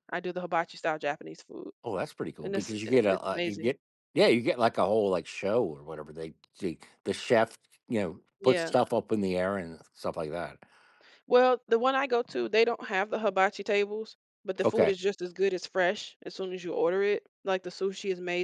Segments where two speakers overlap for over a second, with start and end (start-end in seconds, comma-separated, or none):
2.4-3.7